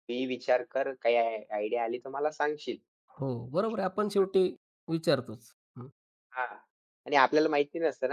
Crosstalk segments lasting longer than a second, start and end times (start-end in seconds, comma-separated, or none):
none